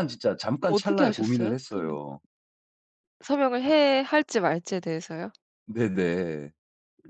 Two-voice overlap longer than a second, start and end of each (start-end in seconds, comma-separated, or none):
0.6-2.0